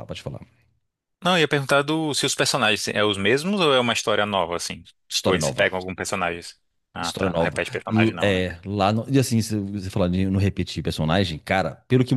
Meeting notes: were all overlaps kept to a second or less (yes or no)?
no